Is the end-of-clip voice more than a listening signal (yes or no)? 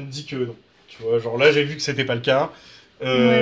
yes